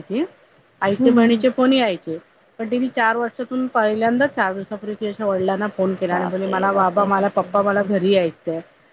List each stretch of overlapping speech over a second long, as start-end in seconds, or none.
6.1-7.9